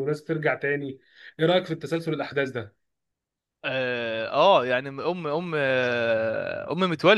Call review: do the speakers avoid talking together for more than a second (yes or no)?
yes